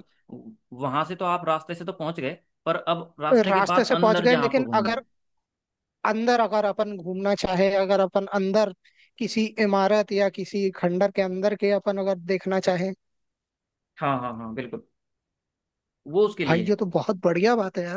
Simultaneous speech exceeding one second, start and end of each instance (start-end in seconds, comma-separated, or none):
3.5-5.0